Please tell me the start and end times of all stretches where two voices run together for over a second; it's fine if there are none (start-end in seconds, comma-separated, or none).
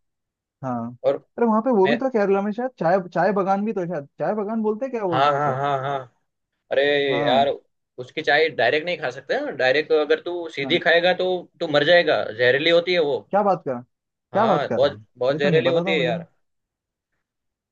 14.3-16.1